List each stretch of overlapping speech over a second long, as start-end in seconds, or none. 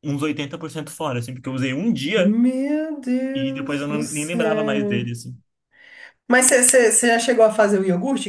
3.3-5.0